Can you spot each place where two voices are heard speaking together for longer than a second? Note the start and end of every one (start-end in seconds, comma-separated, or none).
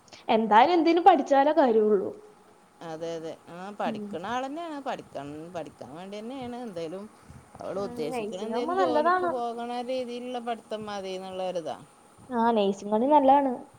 7.9-9.3